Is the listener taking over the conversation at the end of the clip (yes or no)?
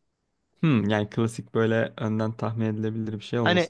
yes